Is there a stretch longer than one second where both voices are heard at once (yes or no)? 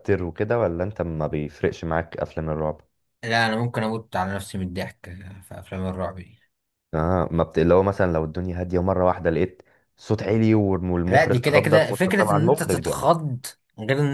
yes